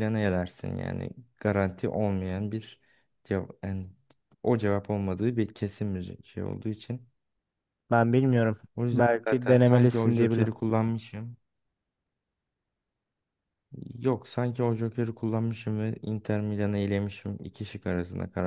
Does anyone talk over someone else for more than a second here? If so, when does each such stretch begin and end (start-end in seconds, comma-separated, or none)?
8.8-10.5